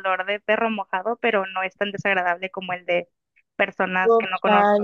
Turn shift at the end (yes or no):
yes